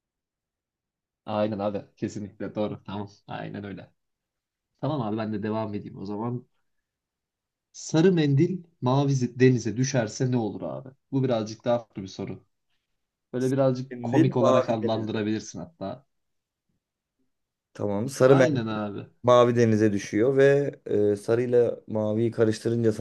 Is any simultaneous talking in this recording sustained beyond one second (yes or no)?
yes